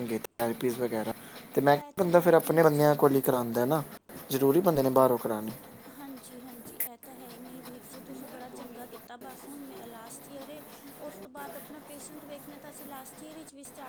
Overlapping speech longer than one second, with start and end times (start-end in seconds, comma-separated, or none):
2.0-3.5